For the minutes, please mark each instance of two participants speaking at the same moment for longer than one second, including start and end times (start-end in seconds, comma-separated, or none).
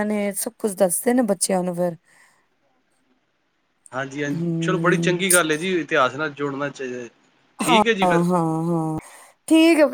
none